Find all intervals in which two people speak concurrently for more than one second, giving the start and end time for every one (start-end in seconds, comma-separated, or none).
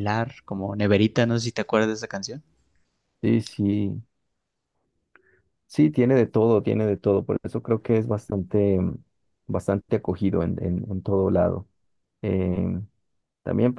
none